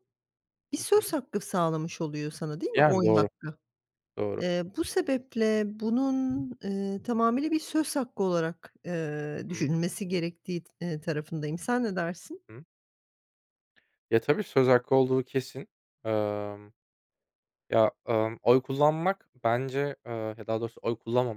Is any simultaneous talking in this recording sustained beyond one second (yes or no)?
no